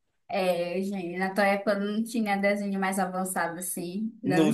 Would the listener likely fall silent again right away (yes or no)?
yes